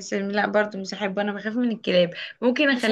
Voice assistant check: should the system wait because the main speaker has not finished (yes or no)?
yes